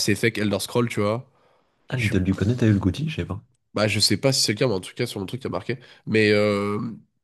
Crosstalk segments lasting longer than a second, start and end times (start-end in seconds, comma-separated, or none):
none